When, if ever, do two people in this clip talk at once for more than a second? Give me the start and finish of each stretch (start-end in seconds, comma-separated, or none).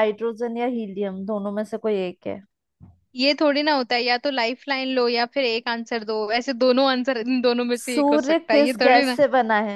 7.8-9.2